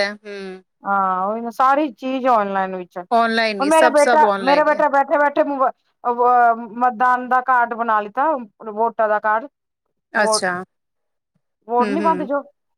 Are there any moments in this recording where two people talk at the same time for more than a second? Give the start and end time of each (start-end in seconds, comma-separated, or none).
3.2-4.8